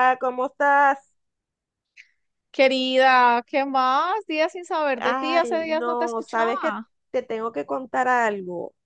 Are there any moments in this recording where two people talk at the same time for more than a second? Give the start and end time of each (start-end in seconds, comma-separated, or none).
5.0-6.9